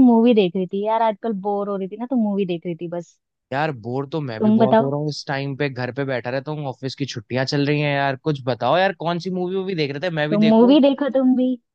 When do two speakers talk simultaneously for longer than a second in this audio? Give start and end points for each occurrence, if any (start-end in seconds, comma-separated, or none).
none